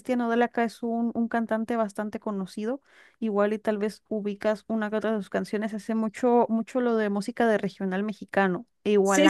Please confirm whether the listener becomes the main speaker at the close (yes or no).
yes